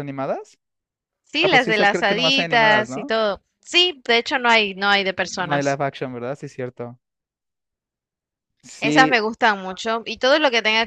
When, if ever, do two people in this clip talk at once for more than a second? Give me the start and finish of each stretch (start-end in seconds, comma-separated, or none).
1.4-3.1